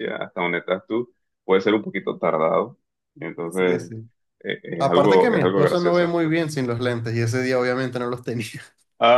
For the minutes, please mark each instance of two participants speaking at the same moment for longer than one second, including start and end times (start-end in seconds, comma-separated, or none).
4.8-6.1